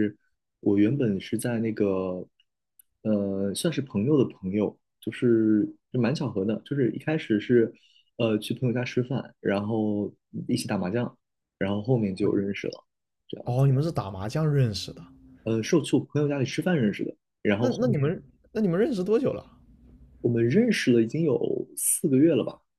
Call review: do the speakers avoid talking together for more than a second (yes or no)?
yes